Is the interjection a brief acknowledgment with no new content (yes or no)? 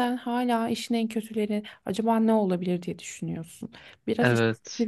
yes